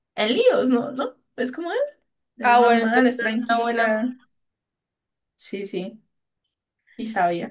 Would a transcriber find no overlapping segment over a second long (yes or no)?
no